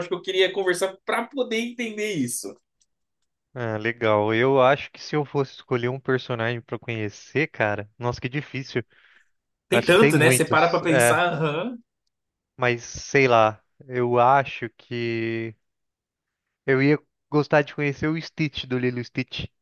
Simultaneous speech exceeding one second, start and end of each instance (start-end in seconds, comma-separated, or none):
9.7-11.2